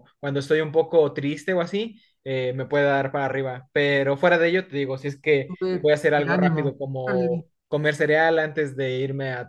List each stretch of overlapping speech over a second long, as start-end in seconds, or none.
5.5-7.4